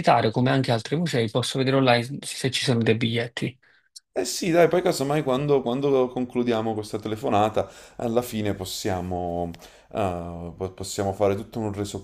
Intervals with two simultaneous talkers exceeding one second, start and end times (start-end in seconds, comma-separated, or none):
none